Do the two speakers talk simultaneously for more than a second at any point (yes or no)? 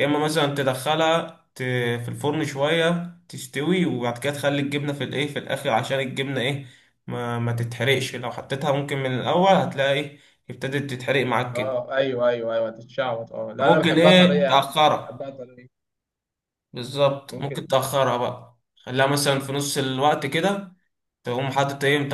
yes